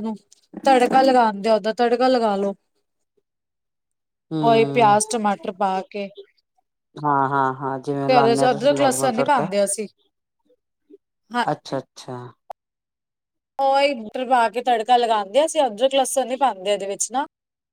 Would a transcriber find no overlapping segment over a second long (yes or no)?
no